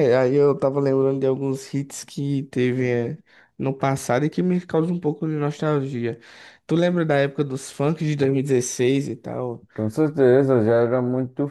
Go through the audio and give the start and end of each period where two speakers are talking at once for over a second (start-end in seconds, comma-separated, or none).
none